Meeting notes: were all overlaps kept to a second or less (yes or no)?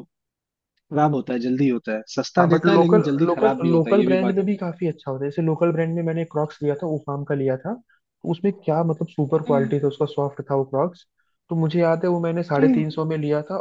no